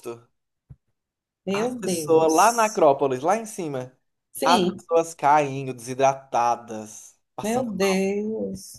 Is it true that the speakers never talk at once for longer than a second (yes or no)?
no